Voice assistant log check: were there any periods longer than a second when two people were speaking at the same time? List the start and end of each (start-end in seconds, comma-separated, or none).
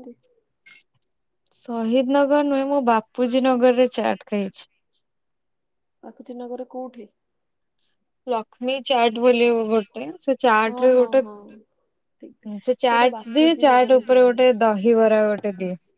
12.9-14.4